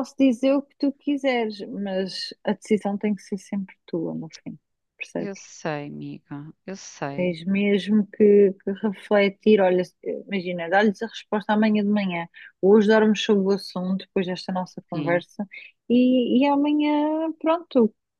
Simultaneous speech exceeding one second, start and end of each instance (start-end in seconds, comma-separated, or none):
none